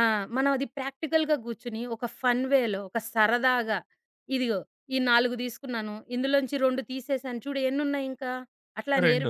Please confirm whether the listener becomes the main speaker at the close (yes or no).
no